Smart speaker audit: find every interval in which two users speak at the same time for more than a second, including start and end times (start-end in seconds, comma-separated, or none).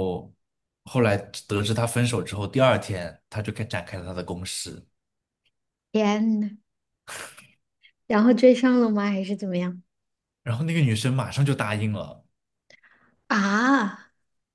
none